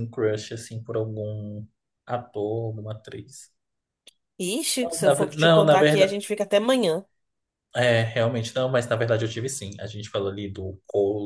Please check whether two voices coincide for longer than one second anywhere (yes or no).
yes